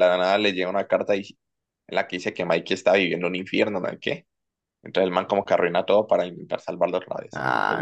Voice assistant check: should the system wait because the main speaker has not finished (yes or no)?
no